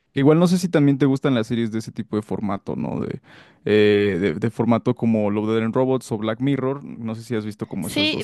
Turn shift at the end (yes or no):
yes